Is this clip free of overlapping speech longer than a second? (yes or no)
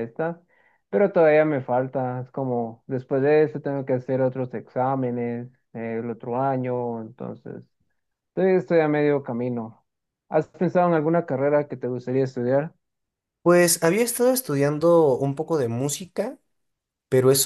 yes